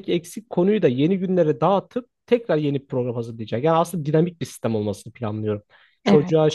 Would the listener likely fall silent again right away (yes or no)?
yes